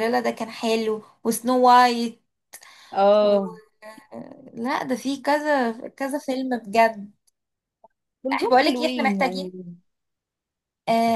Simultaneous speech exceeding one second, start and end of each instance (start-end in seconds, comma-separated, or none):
8.3-9.5